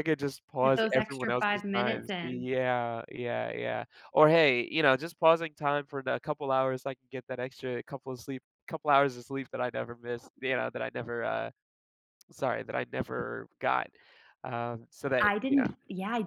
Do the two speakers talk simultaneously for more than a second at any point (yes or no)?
yes